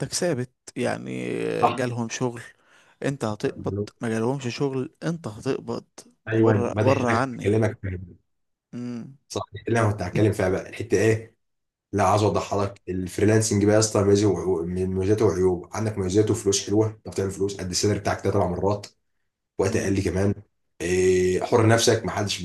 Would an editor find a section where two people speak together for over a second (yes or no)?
yes